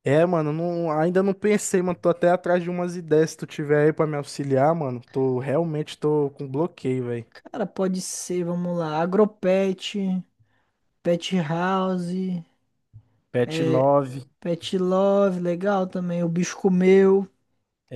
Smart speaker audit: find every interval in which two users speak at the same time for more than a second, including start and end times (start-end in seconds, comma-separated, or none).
none